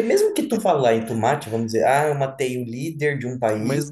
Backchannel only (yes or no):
yes